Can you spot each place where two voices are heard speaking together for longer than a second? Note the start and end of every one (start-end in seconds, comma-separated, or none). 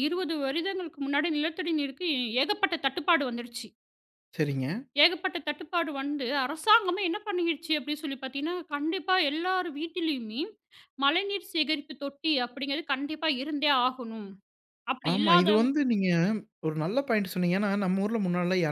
none